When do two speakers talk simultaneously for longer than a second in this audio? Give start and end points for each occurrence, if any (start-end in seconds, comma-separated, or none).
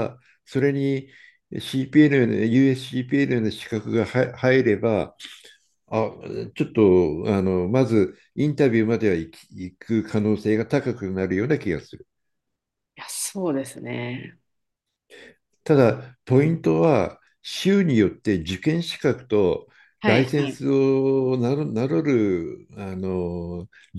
none